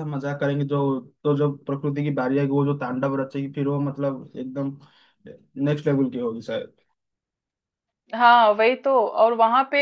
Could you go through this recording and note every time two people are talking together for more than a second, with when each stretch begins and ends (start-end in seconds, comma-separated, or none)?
none